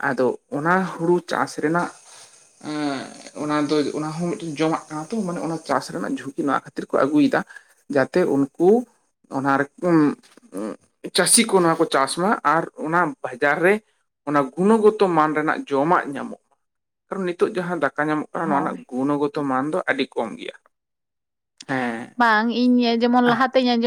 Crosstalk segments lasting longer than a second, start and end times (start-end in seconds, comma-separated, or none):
none